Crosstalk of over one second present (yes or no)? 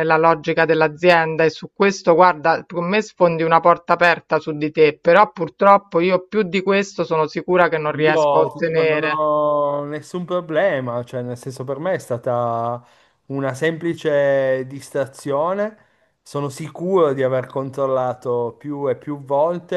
yes